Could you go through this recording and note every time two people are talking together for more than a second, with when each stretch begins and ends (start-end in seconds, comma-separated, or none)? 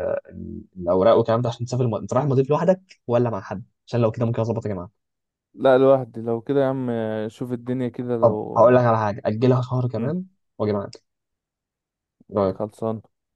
none